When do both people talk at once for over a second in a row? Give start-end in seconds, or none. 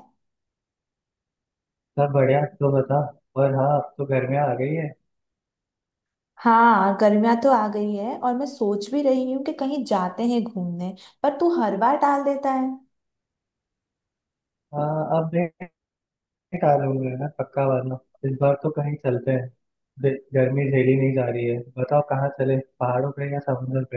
none